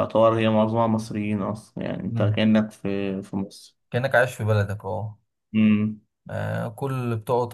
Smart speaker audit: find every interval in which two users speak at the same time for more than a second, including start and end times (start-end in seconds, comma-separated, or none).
none